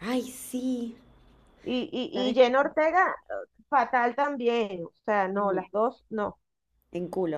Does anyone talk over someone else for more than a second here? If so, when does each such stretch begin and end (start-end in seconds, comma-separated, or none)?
none